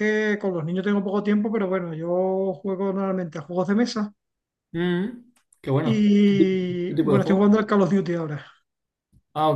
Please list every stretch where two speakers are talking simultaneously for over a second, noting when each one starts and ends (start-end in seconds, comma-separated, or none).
5.8-7.7